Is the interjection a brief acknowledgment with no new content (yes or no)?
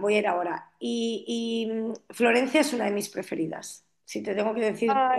yes